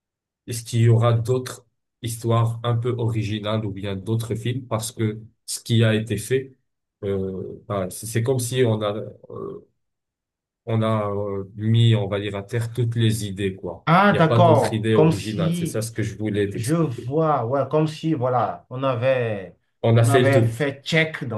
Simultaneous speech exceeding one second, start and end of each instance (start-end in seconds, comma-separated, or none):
13.8-15.8